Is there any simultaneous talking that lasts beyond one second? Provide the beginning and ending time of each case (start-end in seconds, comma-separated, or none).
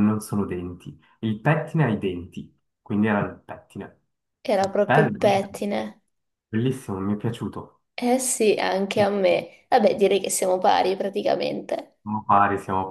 none